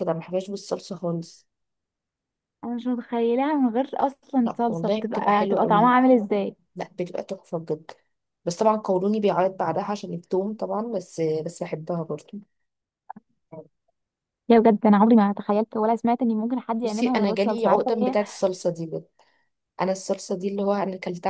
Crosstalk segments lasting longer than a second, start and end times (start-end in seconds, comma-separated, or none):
4.4-6.0, 16.8-18.2